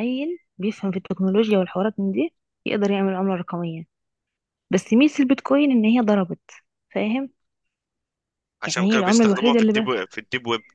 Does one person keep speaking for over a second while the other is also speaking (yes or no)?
yes